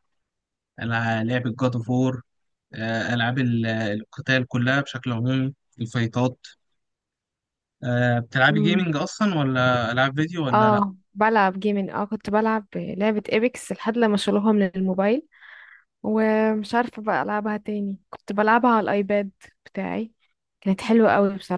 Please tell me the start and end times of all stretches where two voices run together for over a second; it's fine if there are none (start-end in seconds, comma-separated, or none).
none